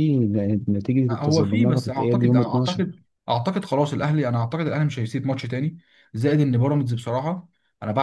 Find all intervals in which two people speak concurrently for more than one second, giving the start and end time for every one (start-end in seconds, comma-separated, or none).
1.1-2.8